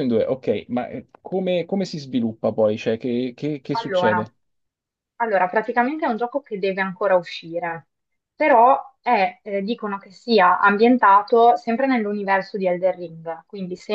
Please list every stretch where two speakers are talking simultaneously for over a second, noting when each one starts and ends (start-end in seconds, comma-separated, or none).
none